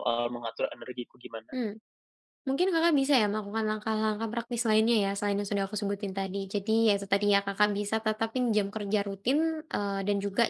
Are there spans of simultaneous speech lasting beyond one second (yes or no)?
no